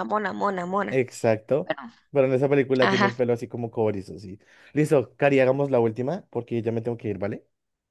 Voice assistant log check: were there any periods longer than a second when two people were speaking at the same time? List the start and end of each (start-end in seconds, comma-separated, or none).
none